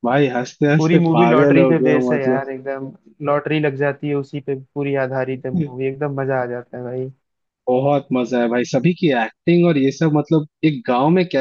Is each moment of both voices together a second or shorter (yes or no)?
no